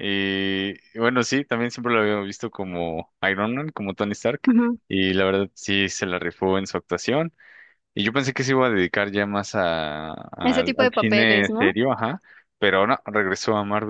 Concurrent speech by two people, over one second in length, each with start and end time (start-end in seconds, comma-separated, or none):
10.4-11.8